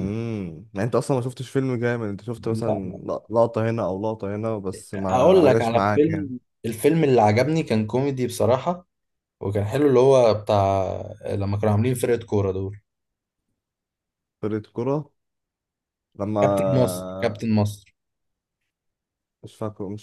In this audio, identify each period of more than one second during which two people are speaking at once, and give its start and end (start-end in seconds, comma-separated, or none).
4.9-6.3